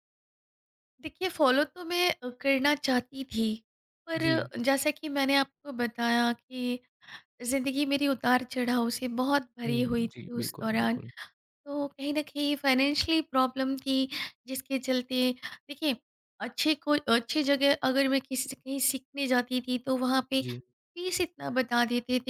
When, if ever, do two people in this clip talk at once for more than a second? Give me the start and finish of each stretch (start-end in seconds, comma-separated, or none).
9.7-11.0